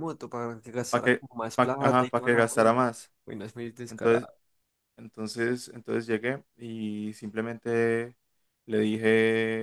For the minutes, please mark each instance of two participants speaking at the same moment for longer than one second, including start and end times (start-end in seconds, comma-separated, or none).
0.9-2.8